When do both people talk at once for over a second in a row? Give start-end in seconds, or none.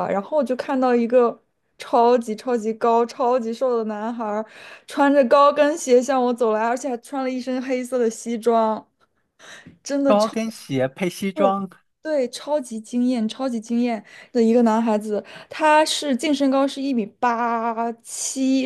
none